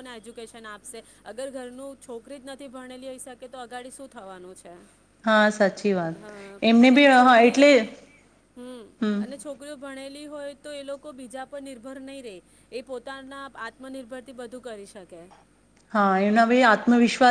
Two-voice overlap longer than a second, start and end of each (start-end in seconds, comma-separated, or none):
none